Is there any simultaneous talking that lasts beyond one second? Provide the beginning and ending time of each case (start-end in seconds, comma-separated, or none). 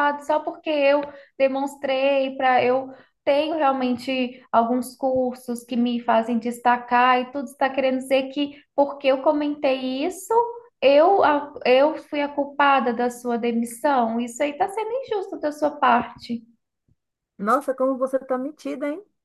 none